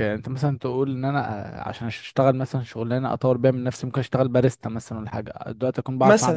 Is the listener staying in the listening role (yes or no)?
no